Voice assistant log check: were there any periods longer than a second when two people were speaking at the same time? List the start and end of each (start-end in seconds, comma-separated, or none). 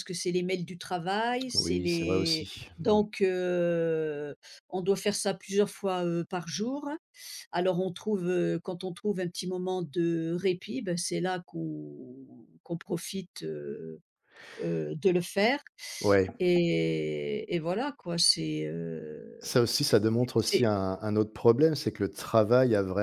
1.5-3.0